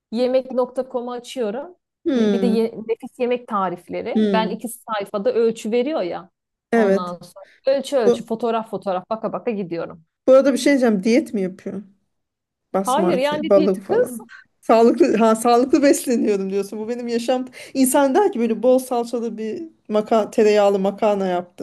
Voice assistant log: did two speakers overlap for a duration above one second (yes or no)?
yes